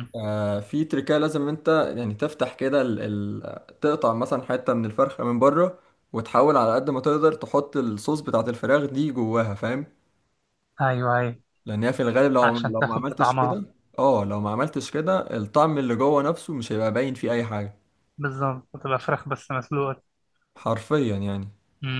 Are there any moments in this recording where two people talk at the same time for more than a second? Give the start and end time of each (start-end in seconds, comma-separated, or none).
12.4-13.6